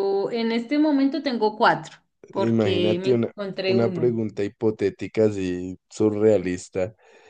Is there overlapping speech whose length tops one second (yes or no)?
yes